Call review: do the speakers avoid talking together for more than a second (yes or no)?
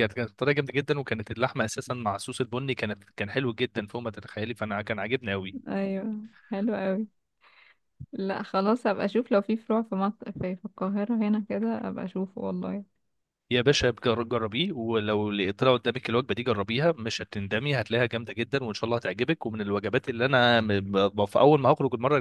yes